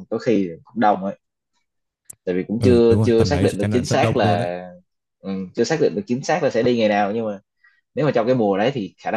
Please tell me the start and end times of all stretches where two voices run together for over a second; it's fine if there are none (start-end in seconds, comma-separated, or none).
2.6-4.5